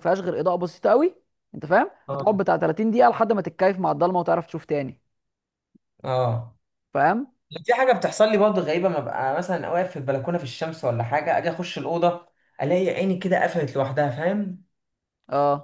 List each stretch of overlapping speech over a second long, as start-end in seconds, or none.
none